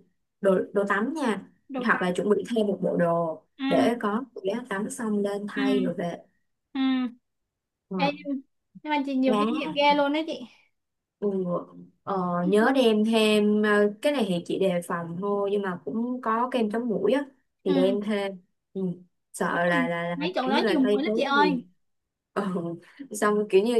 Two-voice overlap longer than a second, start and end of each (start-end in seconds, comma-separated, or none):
19.5-21.6